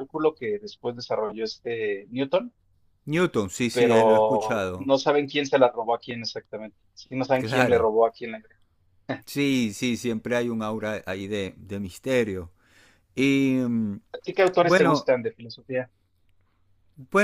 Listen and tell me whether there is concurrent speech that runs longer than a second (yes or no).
yes